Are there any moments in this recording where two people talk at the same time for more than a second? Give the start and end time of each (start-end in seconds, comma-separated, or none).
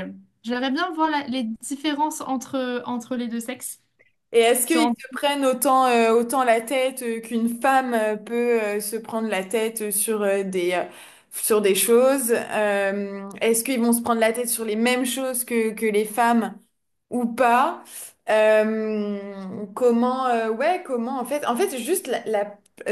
none